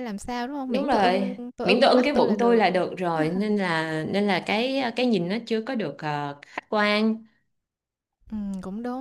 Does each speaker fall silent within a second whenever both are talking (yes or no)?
no